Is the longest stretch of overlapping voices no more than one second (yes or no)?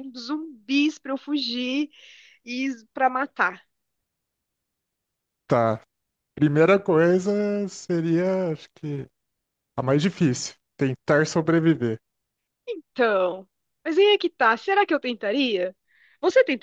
yes